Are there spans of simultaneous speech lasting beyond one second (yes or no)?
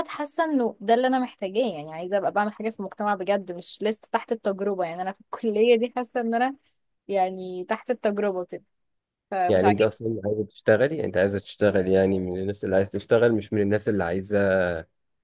no